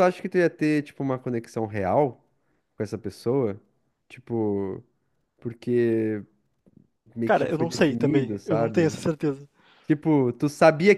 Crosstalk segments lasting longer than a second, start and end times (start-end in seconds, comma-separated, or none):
7.2-9.0